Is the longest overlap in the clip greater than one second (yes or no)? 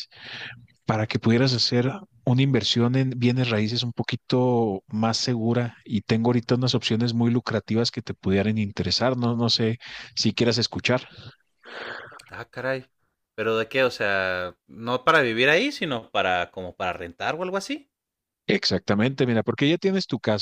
no